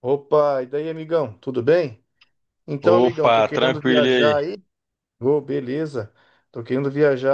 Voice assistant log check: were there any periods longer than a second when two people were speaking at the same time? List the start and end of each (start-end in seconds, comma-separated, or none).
2.8-4.3